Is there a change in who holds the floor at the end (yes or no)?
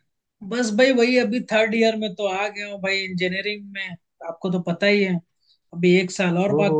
no